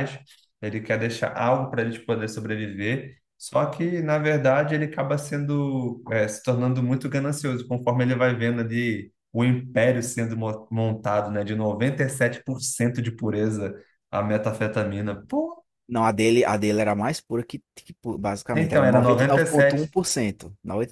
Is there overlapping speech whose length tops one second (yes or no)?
yes